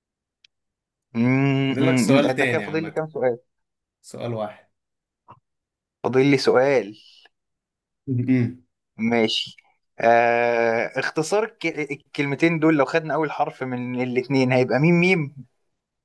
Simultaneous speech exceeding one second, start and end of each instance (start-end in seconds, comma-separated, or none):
1.7-3.0